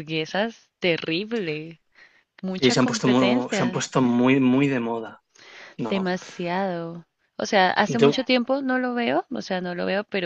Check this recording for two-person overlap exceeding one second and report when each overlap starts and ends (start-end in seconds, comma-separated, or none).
2.5-3.9